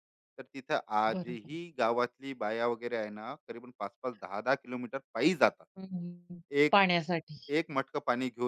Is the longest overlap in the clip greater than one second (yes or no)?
no